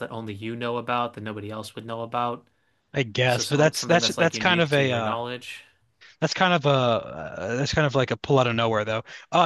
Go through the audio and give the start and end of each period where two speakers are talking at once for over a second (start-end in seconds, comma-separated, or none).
3.3-5.2